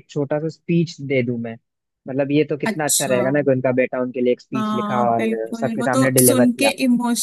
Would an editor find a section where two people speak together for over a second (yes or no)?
yes